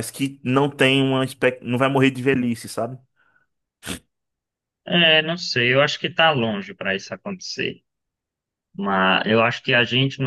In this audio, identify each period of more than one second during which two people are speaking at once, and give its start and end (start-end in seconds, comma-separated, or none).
none